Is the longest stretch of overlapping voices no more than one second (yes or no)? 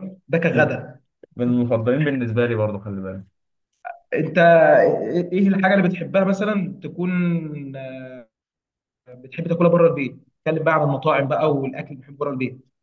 yes